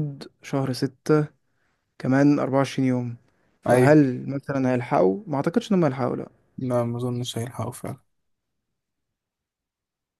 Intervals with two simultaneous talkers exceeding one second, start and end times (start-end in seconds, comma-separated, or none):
none